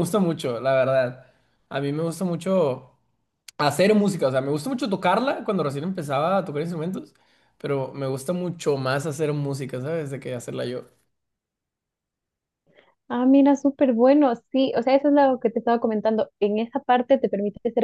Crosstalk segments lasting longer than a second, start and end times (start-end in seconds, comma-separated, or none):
none